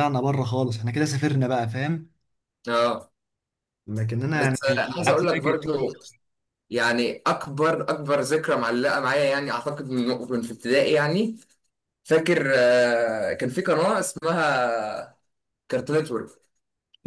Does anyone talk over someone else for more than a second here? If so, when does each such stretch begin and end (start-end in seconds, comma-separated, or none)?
4.3-6.0